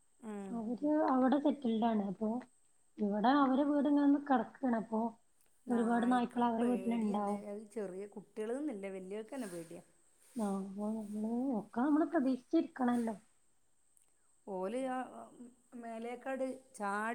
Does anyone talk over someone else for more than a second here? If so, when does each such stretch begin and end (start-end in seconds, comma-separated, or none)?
5.7-7.4